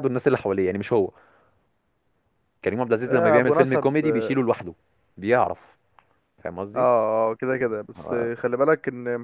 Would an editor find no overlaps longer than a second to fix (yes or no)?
no